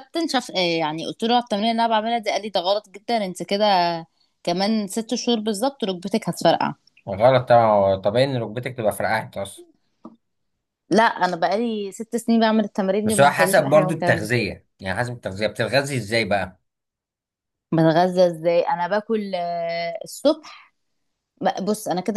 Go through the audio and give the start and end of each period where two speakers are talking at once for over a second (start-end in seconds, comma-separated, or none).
13.1-14.3